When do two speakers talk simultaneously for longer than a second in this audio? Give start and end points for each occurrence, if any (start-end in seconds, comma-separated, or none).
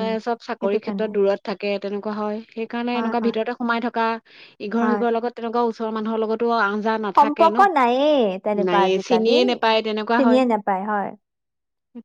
9.1-10.4